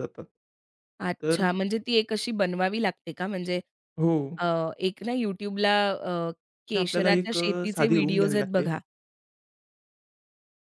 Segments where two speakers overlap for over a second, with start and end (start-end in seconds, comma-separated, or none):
6.7-8.7